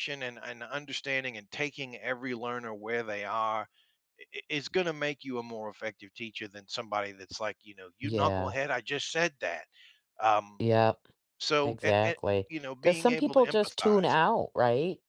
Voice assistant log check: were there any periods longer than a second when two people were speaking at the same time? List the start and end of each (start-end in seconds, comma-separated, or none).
11.6-14.2